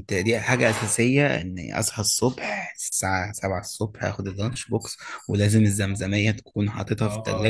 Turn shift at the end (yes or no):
yes